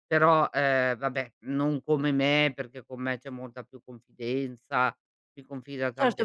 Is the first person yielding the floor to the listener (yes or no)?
yes